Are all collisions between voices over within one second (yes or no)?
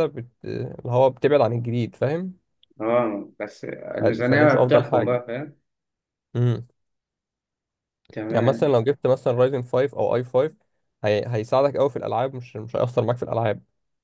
no